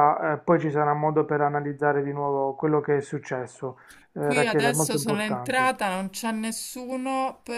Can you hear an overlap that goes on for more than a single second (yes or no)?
yes